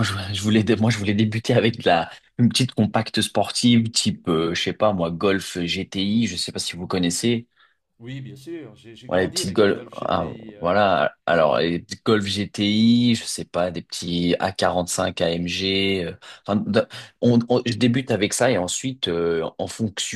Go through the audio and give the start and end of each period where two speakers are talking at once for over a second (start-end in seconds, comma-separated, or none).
9.1-10.7